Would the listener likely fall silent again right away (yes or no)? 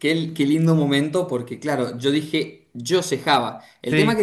yes